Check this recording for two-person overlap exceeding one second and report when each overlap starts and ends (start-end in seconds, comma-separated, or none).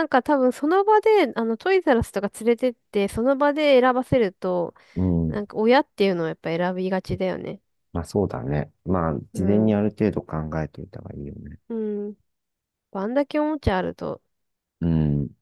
none